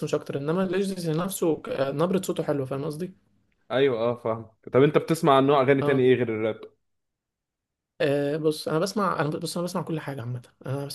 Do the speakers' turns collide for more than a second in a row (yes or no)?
no